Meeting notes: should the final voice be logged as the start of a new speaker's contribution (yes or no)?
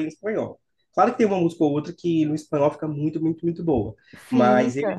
no